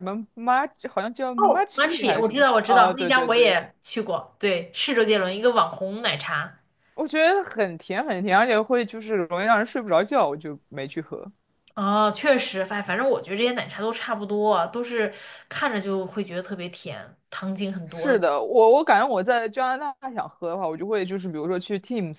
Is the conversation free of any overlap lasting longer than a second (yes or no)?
no